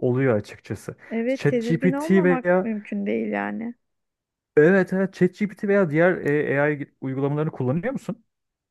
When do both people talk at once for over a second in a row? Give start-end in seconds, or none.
1.1-2.7